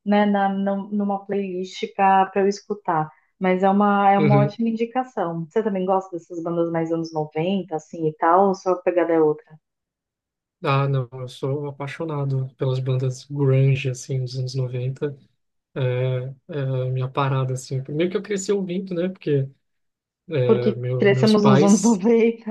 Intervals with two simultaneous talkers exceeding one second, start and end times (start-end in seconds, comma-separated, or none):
20.4-22.0